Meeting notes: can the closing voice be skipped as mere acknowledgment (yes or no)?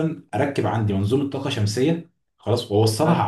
yes